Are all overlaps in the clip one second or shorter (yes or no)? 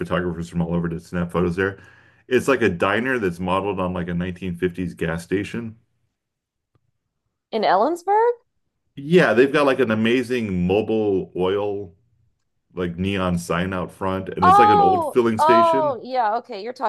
no